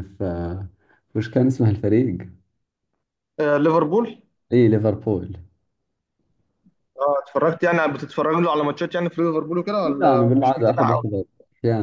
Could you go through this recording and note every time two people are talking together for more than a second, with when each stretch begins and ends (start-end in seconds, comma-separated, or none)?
9.8-11.1